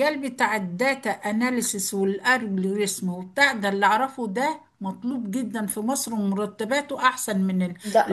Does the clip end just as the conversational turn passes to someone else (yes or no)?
no